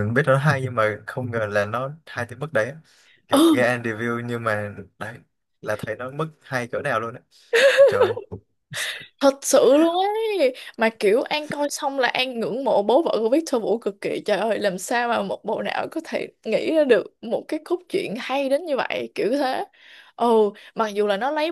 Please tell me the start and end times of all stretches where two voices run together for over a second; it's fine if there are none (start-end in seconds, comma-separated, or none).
none